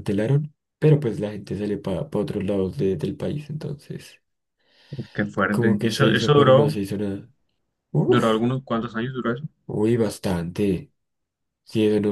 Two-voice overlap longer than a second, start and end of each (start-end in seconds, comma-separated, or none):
5.5-6.8